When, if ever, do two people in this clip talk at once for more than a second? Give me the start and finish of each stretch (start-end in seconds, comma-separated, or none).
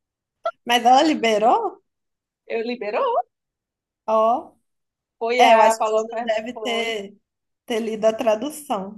5.4-6.9